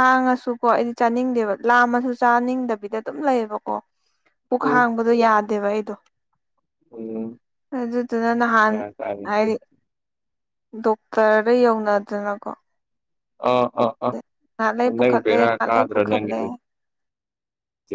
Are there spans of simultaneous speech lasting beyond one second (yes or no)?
yes